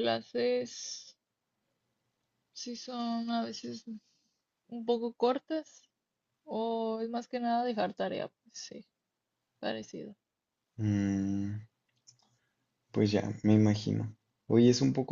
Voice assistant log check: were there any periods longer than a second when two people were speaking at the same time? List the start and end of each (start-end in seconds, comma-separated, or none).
none